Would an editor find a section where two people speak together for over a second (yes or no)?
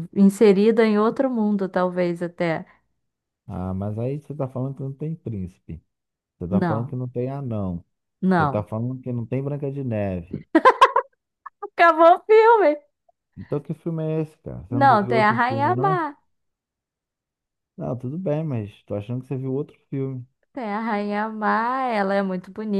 yes